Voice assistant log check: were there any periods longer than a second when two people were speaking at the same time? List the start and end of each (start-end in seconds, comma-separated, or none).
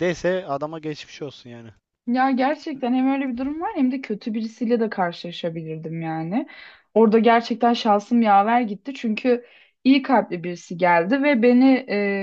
none